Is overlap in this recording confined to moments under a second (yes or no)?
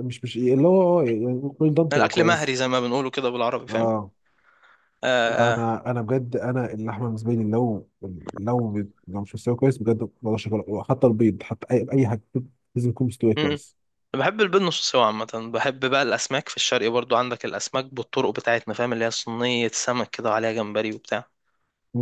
yes